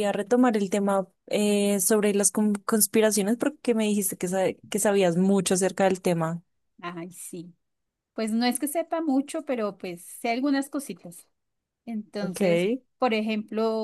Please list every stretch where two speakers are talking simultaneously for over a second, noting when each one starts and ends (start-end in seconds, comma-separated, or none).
none